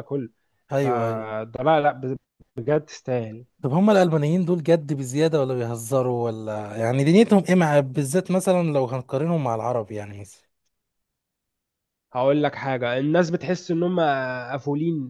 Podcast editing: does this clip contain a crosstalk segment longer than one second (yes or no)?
no